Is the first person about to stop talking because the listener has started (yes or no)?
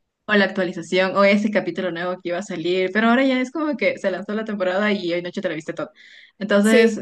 no